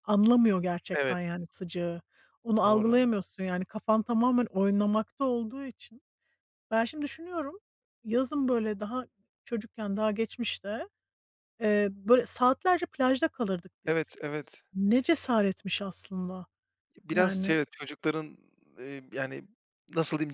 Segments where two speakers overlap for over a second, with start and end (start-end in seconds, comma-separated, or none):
none